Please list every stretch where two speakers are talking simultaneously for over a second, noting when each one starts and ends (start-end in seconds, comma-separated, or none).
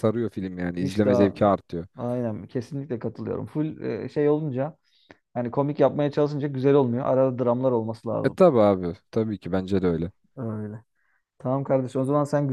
none